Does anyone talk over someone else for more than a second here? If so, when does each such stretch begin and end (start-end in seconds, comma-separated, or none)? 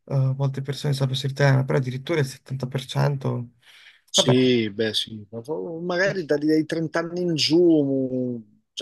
none